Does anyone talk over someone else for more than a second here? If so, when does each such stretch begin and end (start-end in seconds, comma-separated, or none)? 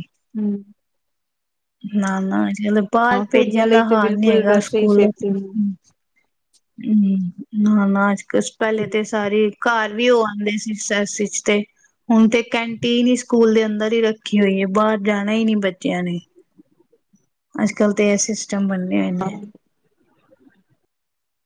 3.1-5.0